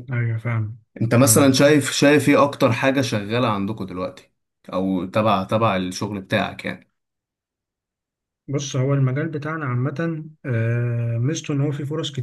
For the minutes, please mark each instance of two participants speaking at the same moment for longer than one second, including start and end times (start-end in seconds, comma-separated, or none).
none